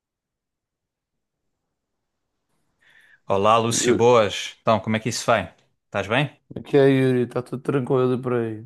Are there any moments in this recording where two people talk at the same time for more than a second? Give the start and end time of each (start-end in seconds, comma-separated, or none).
none